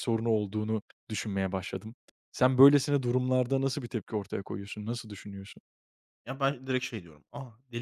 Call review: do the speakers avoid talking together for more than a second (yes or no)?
yes